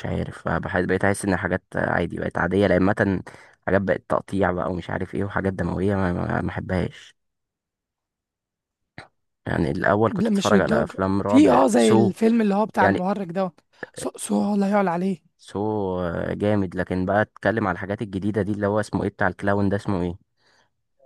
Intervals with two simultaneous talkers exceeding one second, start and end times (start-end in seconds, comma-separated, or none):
10.1-12.1